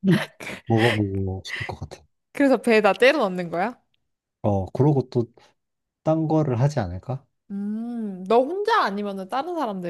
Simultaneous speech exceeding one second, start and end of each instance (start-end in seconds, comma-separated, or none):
none